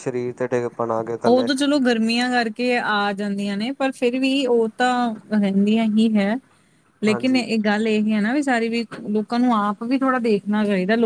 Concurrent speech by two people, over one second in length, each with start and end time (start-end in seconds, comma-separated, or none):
none